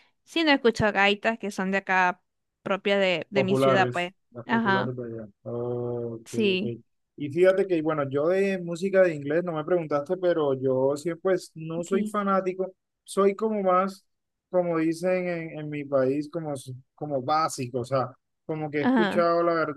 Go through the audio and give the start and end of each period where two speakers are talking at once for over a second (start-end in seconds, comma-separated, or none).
3.3-4.9